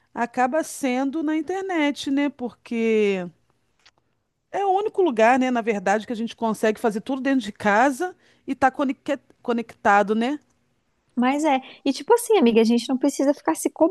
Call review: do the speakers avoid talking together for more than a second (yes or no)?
yes